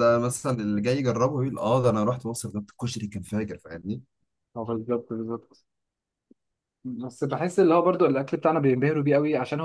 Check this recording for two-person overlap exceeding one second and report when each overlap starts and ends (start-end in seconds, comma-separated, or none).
none